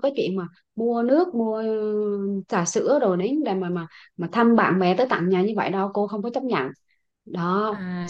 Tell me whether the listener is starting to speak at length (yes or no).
yes